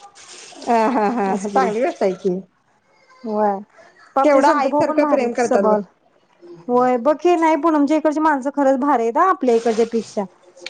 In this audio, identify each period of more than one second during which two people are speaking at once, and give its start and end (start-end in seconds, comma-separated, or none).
4.2-5.8